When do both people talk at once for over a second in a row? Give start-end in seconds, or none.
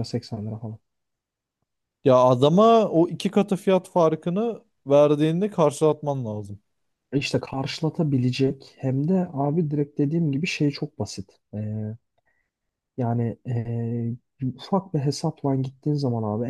none